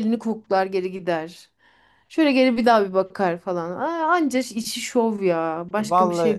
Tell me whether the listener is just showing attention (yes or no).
no